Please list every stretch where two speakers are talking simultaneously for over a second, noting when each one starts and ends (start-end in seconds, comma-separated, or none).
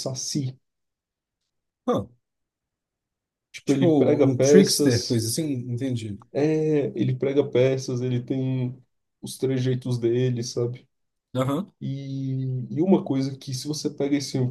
3.6-5.2